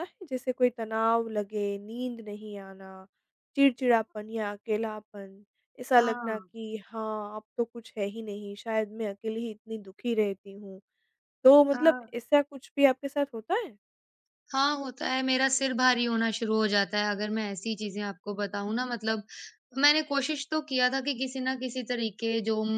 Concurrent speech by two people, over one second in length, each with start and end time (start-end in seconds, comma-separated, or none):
none